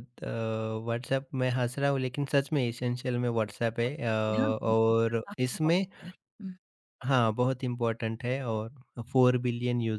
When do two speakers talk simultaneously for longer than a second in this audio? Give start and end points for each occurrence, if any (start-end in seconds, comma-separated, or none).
3.9-5.8